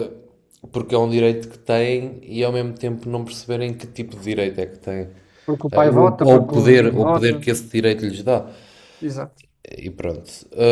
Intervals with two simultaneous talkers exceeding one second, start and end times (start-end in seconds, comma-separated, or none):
5.7-7.3